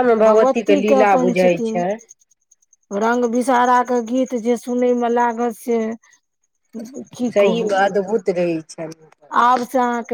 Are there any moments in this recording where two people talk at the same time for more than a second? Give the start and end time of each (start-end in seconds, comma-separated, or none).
none